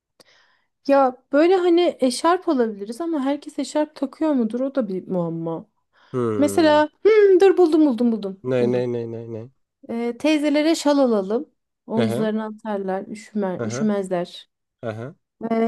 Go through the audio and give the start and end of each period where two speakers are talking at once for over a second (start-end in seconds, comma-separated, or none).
none